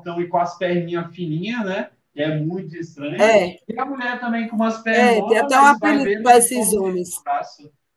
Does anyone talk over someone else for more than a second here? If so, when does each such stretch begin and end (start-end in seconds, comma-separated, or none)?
4.9-7.1